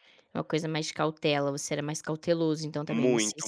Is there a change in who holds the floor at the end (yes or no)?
yes